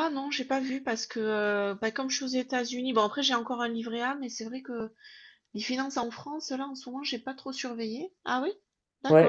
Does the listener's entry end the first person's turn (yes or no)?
yes